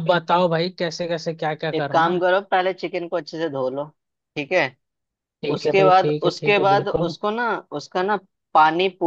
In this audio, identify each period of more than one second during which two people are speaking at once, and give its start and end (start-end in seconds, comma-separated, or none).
5.5-7.2